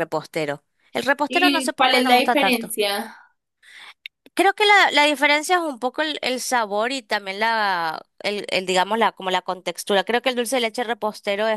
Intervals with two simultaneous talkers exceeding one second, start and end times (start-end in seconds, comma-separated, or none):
1.3-2.7